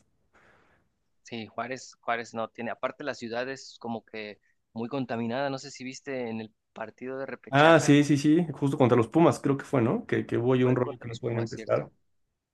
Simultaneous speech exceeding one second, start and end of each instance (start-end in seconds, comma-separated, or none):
10.6-11.9